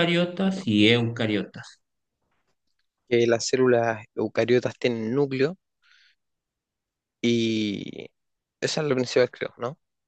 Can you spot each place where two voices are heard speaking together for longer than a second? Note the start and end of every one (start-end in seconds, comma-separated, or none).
none